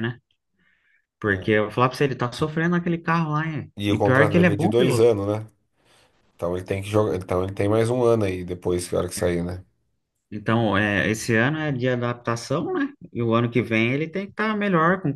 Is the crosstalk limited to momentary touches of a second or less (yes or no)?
no